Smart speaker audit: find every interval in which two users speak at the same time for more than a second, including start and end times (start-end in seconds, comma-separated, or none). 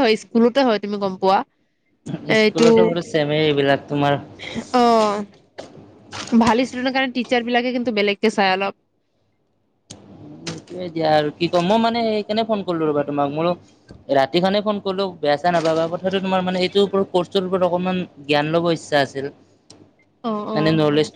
none